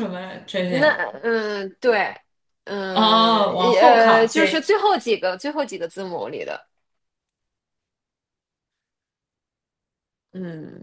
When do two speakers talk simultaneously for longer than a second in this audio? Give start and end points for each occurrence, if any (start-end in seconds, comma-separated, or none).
2.9-4.7